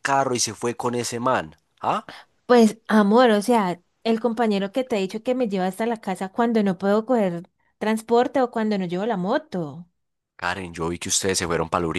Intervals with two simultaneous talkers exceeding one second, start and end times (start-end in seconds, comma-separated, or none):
none